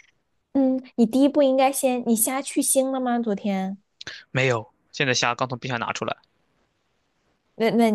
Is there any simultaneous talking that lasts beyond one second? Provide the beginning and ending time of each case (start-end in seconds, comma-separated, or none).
none